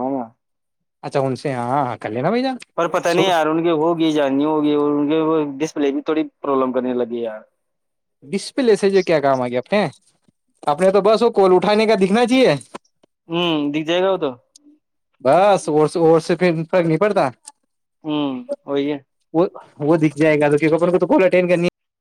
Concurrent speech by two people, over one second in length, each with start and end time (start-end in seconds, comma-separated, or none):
none